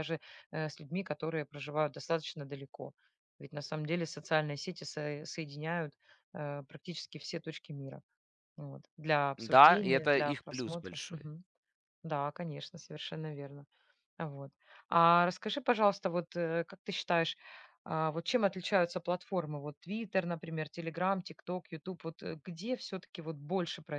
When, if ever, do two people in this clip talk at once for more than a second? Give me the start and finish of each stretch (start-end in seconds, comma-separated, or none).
9.4-11.0